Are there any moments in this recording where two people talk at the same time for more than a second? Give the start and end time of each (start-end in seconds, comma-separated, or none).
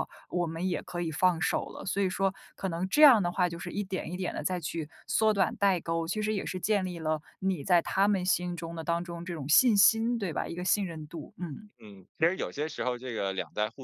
none